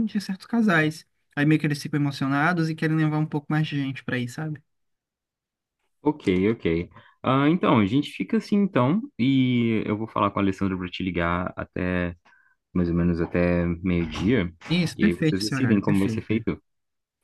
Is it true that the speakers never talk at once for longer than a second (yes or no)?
no